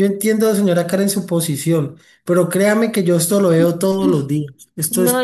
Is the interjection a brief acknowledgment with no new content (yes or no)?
no